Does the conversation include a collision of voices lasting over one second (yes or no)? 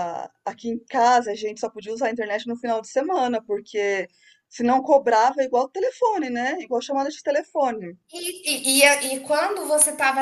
no